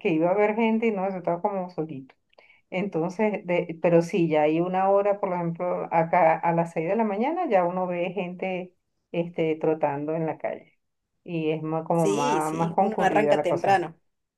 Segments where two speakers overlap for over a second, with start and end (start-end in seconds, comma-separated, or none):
11.9-13.8